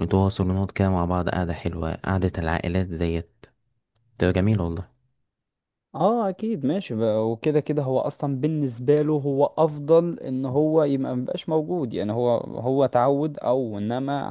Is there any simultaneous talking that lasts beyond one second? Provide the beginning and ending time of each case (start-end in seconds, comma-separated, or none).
none